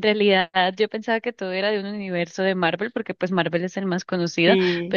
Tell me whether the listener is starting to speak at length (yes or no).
no